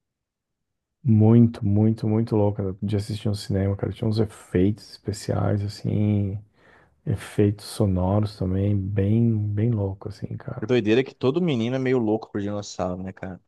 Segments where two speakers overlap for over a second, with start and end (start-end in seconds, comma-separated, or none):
none